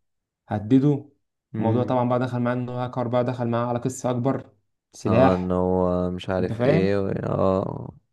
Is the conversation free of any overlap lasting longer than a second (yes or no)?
yes